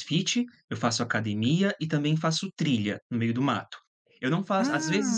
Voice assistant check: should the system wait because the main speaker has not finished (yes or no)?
yes